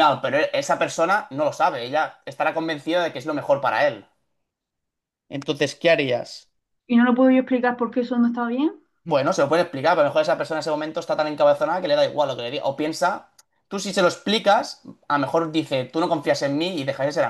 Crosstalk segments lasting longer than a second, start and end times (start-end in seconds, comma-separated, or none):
none